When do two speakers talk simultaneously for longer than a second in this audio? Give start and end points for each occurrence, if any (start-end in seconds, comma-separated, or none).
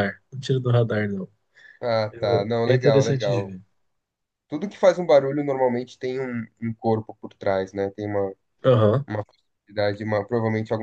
2.1-3.5